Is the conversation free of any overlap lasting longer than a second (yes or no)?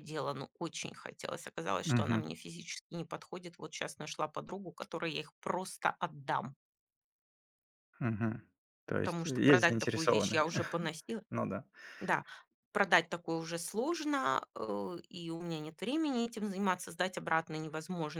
no